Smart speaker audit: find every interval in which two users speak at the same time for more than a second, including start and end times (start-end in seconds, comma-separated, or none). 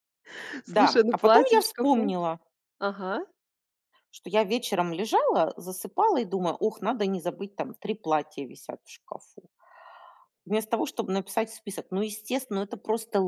0.7-2.1